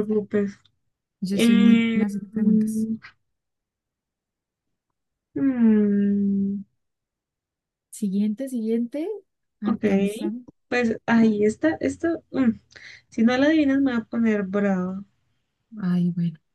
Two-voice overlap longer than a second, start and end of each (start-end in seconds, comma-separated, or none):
1.3-2.9